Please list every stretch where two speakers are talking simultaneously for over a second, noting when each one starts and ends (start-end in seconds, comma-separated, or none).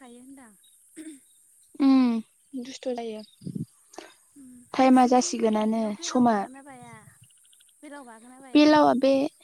4.8-6.3